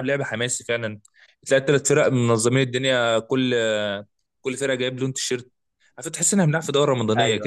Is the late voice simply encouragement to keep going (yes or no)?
no